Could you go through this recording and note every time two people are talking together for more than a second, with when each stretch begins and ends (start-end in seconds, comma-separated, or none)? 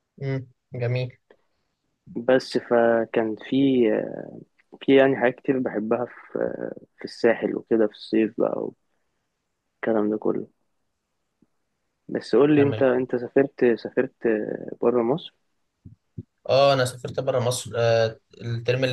none